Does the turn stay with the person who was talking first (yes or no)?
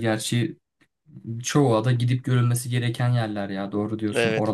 no